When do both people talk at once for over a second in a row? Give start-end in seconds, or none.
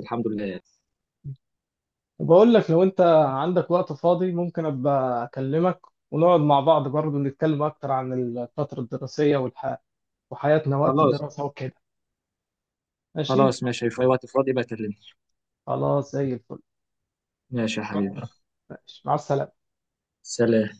none